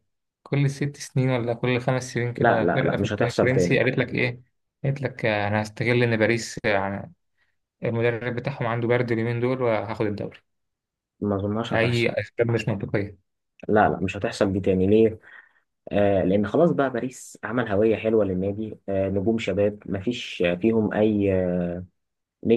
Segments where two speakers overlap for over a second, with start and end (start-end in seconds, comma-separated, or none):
2.4-3.8